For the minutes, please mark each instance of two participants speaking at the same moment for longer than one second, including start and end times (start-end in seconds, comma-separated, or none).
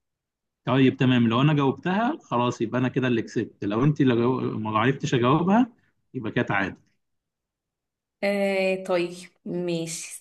none